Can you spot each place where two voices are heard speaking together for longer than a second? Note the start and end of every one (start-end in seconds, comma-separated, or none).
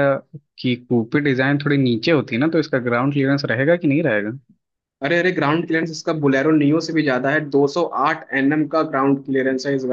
none